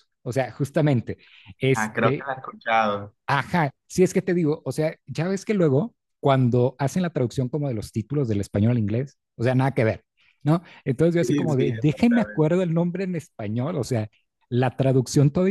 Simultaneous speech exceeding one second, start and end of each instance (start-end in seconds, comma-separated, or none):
11.2-12.5